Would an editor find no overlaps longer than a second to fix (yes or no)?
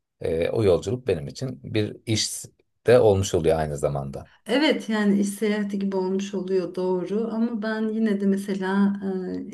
yes